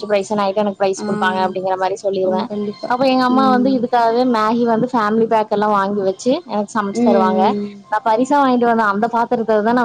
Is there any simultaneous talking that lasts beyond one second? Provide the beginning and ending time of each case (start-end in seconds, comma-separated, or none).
1.1-2.4